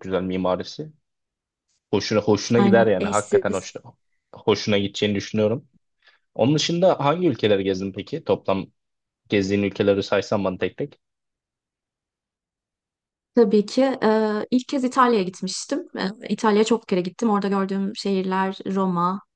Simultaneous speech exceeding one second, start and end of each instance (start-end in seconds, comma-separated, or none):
2.6-3.8